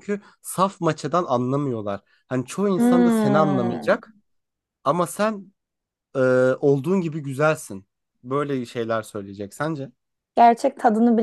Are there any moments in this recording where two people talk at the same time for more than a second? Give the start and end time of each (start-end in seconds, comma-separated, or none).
2.8-4.0